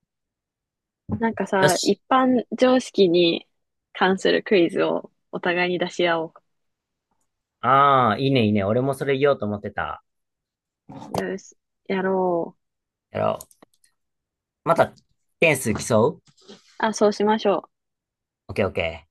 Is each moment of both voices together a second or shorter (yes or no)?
yes